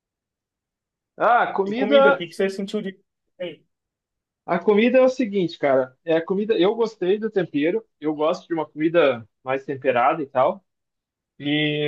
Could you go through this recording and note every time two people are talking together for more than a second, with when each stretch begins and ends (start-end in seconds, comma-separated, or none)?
none